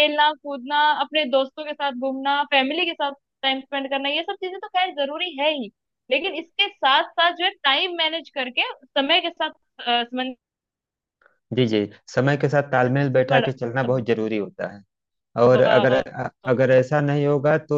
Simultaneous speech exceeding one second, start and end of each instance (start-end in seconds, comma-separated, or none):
none